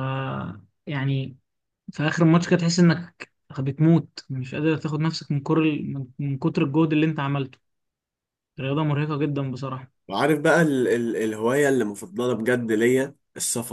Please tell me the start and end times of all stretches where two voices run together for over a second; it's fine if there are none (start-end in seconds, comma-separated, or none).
none